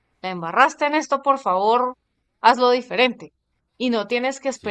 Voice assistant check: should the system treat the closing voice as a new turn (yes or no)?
no